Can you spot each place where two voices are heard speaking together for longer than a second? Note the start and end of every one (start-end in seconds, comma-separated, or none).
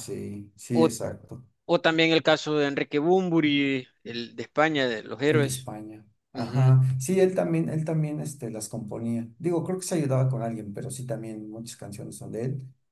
none